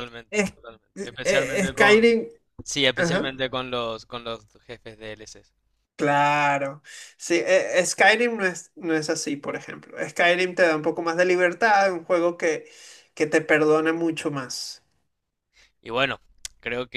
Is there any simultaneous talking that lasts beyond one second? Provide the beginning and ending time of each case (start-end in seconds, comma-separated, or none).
0.9-2.1